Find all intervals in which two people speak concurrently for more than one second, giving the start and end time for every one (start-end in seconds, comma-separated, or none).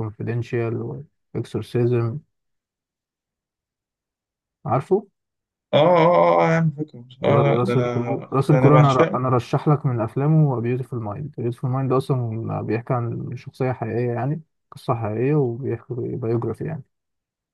7.2-9.3